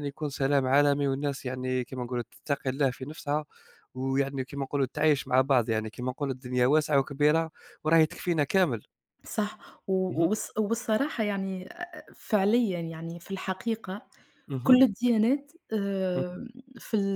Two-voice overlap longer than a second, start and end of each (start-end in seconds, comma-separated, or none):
none